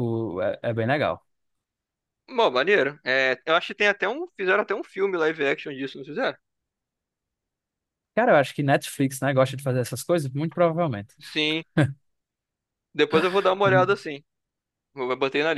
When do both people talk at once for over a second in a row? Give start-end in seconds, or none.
none